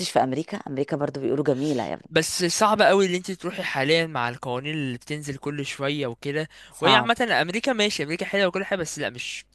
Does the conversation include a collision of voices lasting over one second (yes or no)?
no